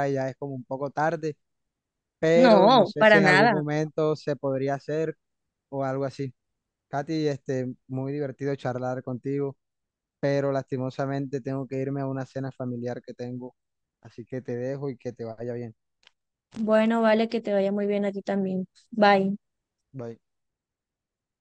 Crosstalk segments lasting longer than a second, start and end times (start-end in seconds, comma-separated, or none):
2.3-3.6